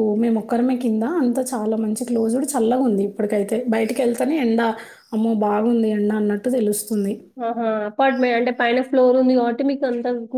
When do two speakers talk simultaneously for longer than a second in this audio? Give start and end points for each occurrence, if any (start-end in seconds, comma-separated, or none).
none